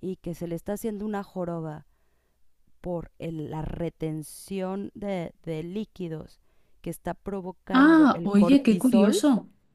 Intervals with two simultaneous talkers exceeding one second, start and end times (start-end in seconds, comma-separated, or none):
7.7-9.2